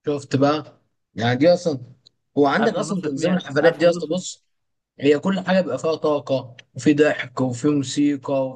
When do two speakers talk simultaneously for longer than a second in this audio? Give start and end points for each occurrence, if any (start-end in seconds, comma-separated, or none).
2.6-4.1